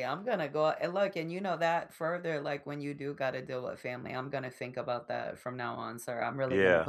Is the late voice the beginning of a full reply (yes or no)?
yes